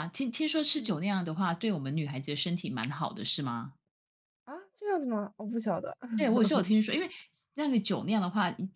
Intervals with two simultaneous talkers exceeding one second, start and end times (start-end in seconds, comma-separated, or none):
none